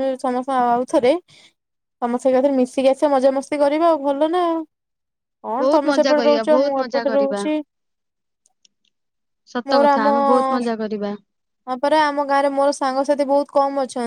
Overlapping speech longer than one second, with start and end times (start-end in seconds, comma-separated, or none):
5.6-7.4